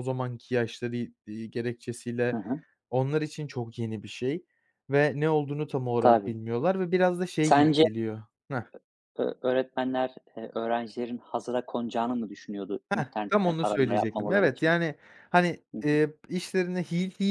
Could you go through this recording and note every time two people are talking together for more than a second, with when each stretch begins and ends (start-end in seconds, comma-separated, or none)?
12.9-14.7